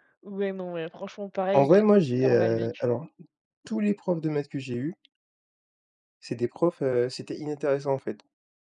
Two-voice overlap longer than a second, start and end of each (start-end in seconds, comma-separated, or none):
1.5-2.9